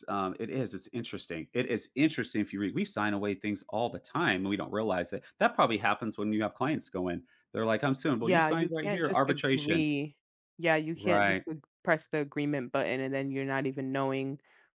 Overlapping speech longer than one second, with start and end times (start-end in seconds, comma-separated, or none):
8.2-9.9